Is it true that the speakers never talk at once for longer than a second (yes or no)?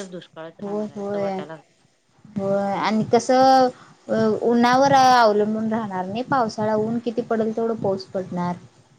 yes